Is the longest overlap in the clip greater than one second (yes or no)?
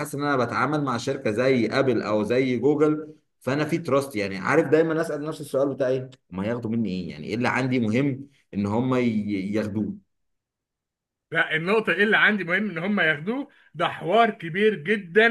no